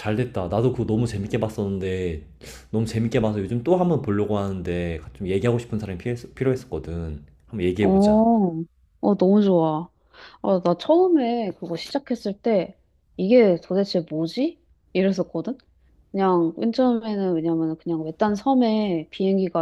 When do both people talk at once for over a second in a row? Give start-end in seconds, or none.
none